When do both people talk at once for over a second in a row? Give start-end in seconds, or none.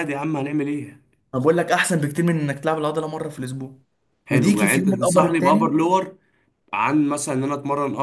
4.3-5.8